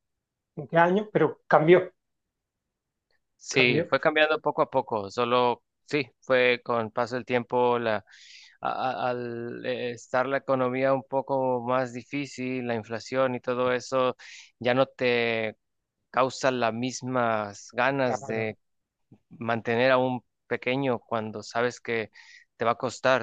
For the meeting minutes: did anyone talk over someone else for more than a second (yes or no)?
no